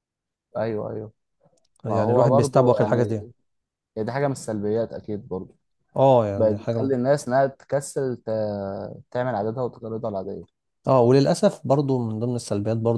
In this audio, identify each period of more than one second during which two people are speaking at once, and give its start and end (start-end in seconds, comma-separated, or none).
1.9-3.2